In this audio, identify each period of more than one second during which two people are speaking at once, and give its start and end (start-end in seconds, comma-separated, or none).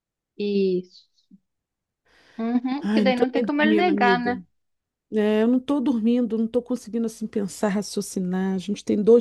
2.8-4.4